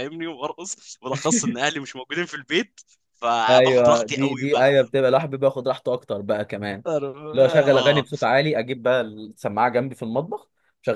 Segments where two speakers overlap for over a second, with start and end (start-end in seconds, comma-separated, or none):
3.5-4.7